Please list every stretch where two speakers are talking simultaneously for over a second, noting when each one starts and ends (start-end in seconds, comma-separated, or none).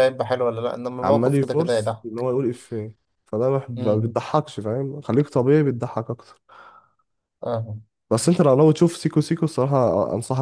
1.0-2.3